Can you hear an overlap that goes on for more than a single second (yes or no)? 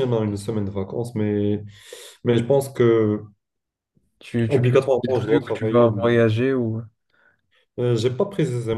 yes